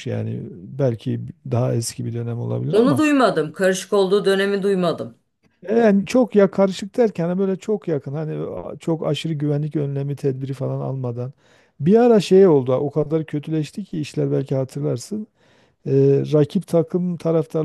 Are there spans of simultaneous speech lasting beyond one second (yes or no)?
no